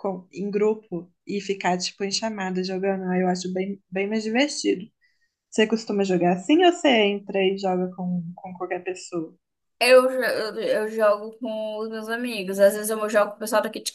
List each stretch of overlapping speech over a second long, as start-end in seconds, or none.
none